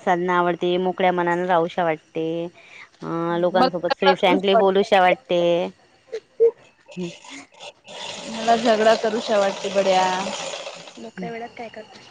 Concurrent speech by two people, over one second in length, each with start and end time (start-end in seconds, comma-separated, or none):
3.3-4.9